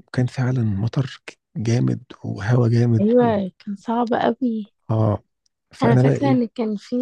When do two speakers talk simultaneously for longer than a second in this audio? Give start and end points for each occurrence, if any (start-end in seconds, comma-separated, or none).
none